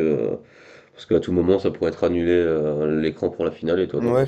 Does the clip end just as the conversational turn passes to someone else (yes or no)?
yes